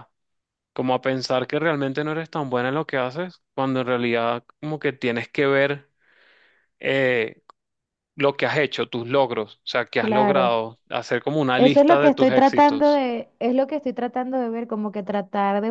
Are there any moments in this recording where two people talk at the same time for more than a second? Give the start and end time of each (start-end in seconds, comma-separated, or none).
11.6-13.0